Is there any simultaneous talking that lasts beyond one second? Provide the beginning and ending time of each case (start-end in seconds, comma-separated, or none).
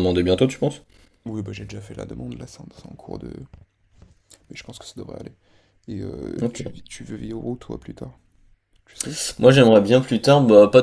none